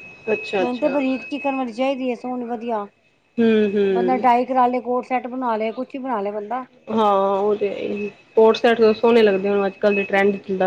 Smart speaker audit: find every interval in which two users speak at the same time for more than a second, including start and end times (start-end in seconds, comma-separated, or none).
none